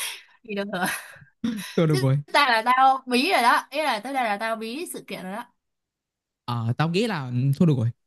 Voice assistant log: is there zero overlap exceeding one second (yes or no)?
yes